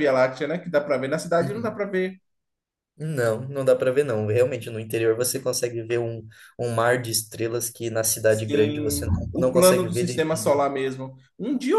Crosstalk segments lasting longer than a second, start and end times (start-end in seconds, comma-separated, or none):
8.3-10.6